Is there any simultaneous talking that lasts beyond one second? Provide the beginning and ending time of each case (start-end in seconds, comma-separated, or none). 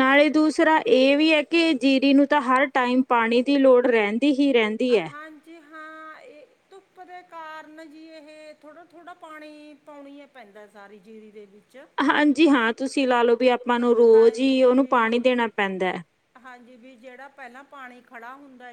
14.1-15.4